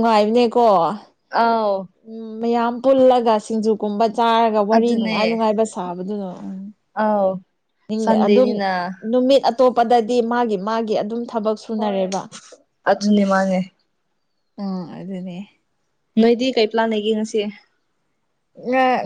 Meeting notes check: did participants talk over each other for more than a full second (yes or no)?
no